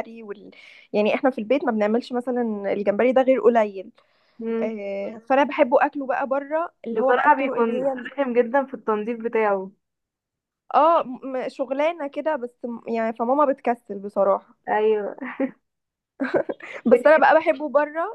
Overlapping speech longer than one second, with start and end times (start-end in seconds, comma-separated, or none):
6.9-8.1